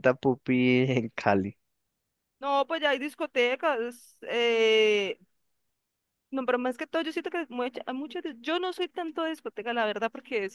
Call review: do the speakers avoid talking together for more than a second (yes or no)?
yes